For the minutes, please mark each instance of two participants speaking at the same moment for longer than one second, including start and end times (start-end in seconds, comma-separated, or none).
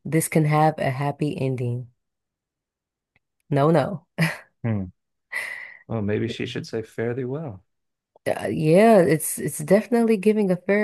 none